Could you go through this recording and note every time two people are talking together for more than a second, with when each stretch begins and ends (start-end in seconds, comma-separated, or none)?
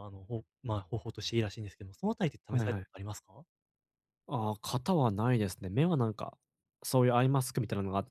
none